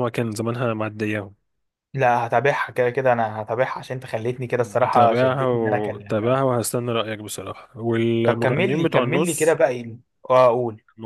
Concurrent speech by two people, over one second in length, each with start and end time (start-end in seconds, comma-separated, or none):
4.9-6.4, 8.2-9.6